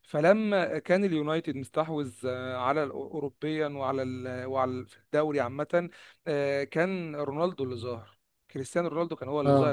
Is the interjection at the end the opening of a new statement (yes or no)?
no